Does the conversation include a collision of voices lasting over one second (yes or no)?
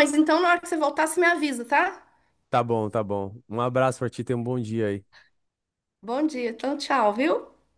no